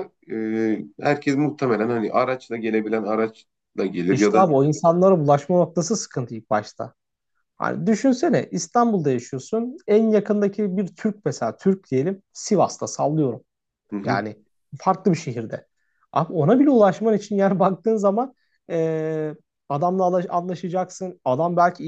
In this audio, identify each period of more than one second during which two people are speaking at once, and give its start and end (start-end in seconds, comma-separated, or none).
none